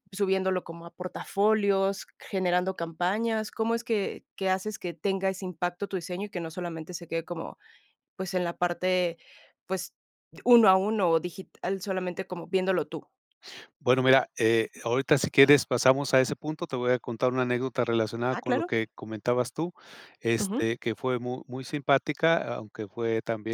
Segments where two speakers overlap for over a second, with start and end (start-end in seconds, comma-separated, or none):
none